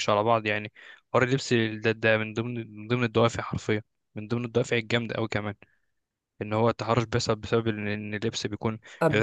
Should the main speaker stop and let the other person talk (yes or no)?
no